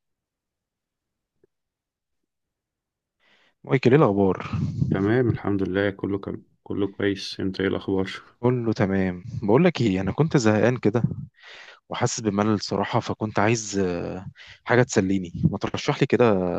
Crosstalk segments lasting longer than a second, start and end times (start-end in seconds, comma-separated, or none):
none